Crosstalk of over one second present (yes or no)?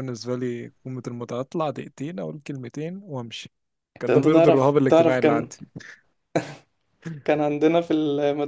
yes